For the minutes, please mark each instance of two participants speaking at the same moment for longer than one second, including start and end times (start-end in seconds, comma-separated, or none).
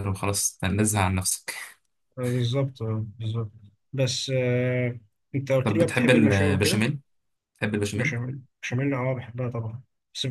5.6-6.8